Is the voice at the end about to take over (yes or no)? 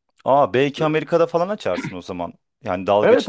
no